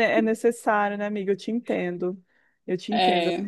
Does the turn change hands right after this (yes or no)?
no